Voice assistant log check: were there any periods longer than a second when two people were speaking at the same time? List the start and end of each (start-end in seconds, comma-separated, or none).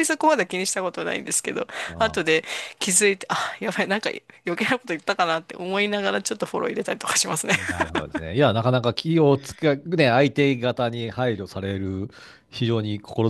none